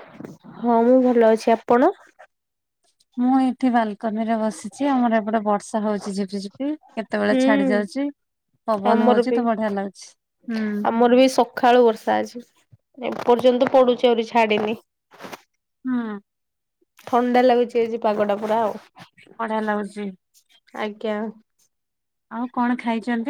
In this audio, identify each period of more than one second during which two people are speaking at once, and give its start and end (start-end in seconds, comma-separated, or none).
none